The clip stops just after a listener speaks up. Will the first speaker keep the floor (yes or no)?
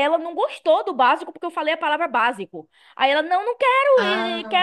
yes